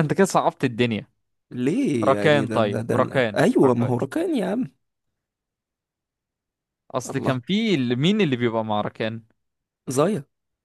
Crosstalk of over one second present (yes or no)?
yes